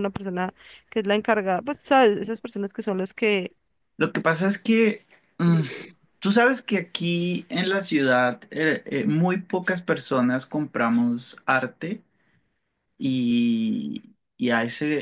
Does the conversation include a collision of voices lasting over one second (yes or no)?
no